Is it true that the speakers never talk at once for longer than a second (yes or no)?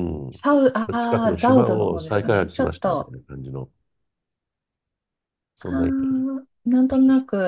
no